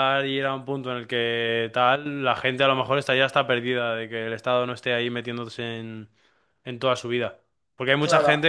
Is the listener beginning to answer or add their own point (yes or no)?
no